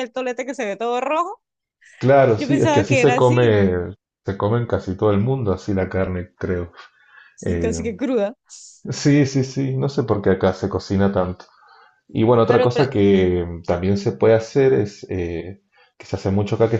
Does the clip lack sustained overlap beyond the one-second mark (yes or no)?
no